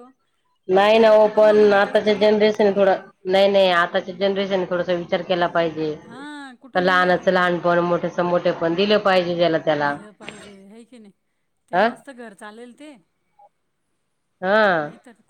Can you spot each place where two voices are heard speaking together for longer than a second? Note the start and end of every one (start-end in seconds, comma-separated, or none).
1.0-2.3